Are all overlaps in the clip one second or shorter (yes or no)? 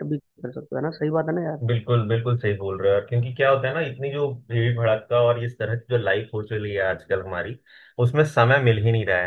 yes